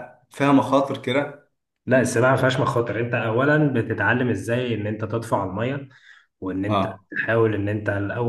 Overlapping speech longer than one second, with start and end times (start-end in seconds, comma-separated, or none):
none